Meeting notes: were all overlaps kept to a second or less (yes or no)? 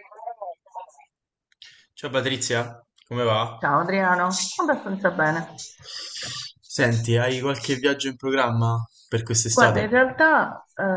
yes